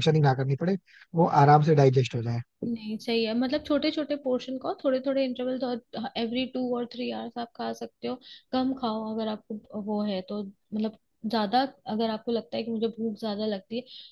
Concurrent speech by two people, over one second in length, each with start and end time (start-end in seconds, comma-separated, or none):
none